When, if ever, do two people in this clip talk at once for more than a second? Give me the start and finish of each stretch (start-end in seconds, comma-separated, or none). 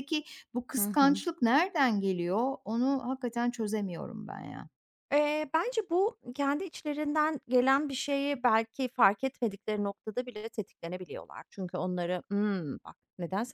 none